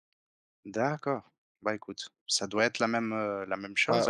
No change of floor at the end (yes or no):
no